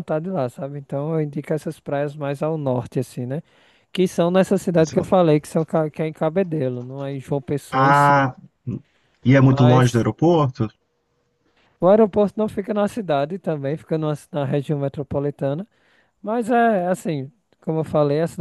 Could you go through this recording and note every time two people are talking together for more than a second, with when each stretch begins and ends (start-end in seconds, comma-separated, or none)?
none